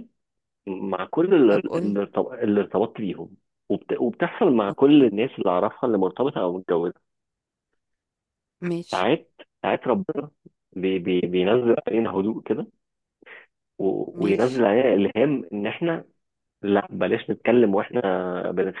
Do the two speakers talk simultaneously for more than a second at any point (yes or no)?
no